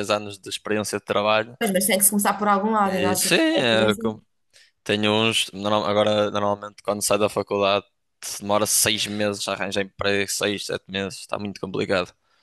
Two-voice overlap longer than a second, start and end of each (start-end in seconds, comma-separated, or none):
2.8-4.1